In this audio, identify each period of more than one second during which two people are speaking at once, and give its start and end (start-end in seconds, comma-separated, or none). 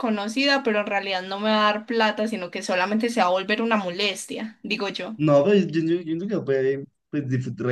none